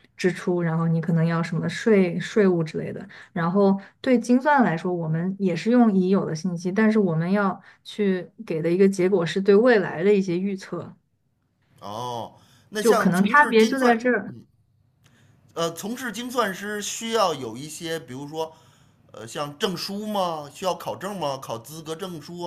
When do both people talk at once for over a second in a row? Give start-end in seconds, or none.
12.8-14.0